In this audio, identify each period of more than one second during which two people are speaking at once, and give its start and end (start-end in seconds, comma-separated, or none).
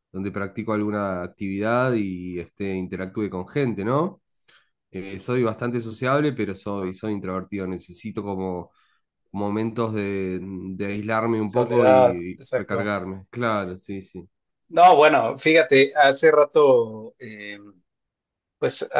11.4-12.9